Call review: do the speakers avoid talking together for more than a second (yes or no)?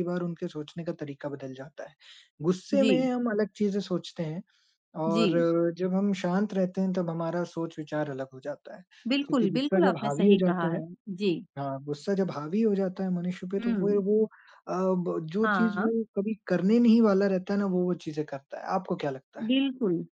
no